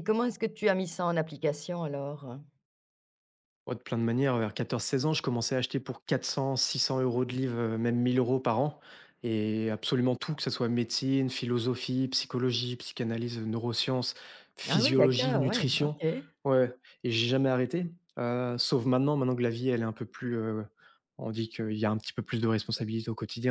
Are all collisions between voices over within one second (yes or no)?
no